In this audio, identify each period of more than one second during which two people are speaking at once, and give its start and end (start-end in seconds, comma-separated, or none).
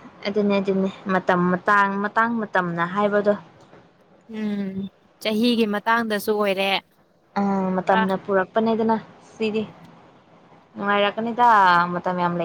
none